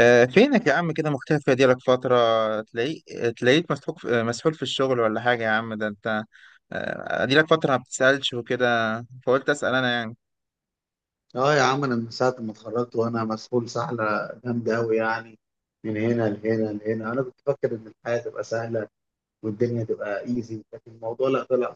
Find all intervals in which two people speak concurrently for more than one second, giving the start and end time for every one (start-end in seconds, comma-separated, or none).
none